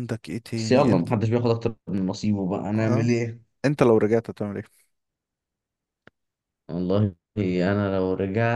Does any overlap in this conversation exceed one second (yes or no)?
no